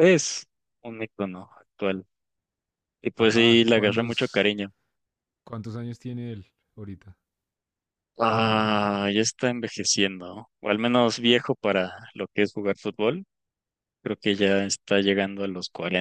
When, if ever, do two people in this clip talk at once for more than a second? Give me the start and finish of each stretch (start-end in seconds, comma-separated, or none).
3.2-4.5